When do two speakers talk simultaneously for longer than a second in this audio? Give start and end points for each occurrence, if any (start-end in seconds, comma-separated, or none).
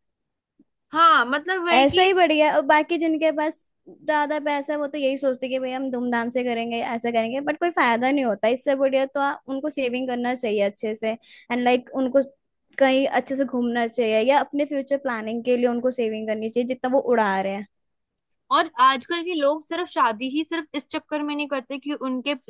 none